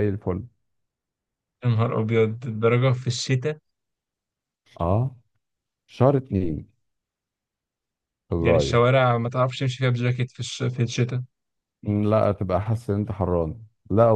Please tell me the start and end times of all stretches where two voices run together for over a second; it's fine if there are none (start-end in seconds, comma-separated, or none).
none